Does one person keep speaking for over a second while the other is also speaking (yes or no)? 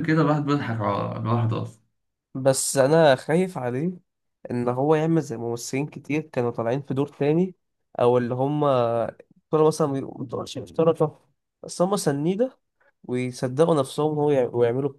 no